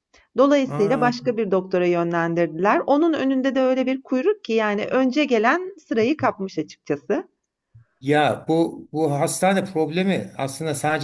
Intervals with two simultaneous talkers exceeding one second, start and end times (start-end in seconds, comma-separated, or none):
none